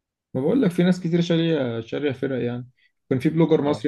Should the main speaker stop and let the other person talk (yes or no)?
no